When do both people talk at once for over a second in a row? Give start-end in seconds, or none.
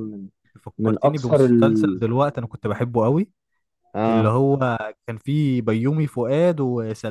0.8-2.0